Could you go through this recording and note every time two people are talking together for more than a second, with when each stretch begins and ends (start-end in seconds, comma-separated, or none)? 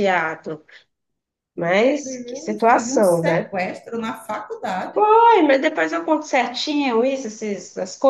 1.5-3.5